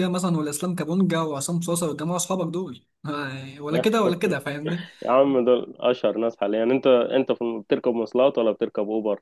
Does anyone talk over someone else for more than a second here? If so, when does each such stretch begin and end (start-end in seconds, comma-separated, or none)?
none